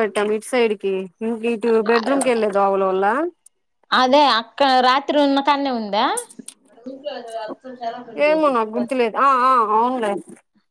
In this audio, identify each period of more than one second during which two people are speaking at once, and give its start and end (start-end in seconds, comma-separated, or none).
none